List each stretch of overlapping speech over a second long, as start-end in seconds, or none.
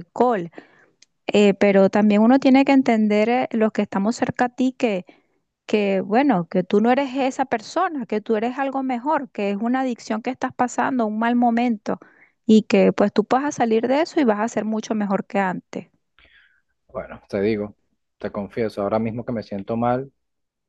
none